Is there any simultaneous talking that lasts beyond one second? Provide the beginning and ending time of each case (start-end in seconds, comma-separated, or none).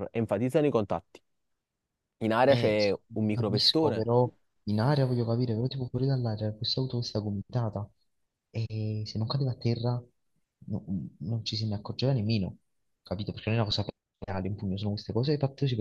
2.5-4.1